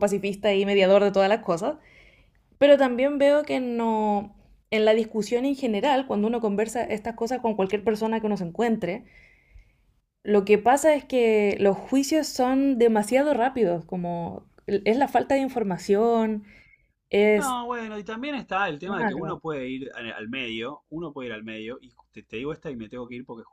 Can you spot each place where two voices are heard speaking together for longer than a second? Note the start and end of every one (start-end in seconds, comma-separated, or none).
none